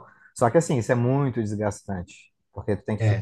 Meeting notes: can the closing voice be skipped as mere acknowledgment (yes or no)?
yes